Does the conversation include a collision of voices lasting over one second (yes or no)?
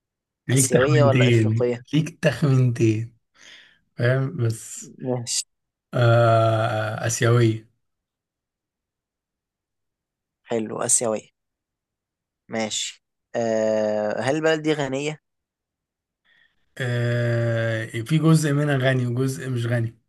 yes